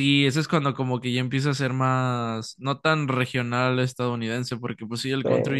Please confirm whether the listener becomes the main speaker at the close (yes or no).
no